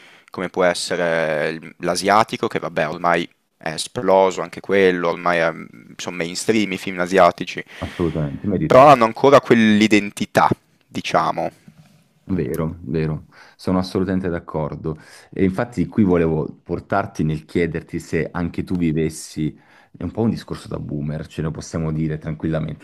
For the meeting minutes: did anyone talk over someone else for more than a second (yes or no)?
no